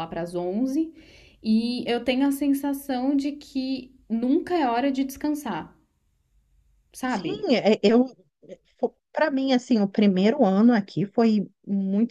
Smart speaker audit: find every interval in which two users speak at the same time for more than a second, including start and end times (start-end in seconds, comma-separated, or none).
none